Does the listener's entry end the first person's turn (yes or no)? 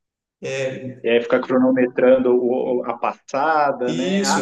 yes